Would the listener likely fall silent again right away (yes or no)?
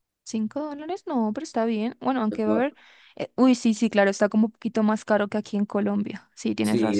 no